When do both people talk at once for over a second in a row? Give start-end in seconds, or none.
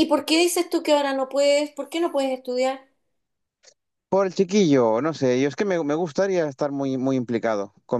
none